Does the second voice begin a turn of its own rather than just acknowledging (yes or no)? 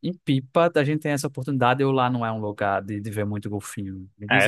yes